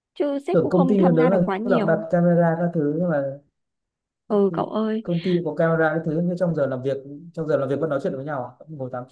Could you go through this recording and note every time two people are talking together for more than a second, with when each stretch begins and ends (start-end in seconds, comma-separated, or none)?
0.5-2.0